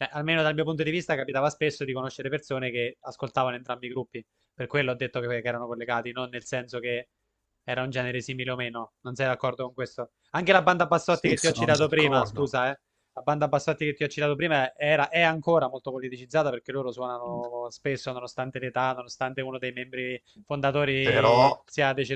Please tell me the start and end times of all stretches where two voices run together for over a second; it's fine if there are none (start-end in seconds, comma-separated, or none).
11.1-12.5